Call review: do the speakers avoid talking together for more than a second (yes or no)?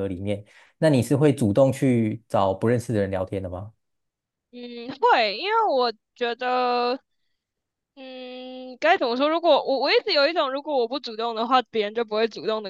yes